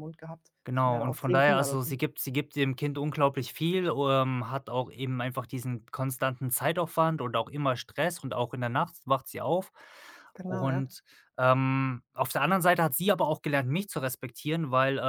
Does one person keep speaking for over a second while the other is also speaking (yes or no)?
yes